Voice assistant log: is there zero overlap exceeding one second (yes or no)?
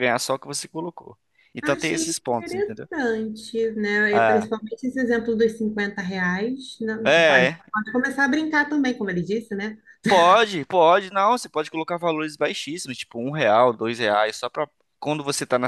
no